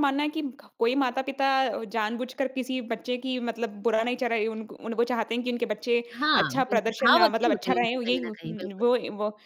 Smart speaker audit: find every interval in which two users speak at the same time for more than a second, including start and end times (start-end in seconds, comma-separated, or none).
6.2-8.3